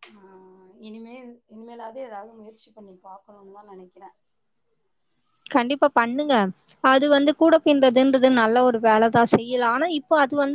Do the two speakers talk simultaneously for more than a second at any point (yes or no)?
no